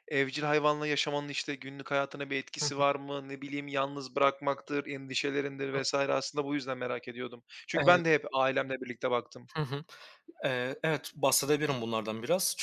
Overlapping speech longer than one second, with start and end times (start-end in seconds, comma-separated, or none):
none